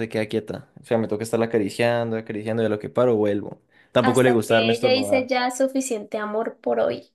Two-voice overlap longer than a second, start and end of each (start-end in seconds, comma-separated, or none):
4.0-5.3